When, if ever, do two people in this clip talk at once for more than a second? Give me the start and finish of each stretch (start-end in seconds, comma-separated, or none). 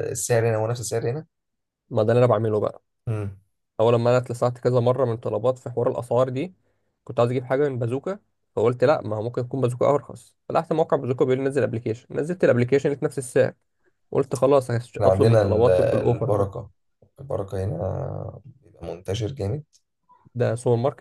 14.9-16.5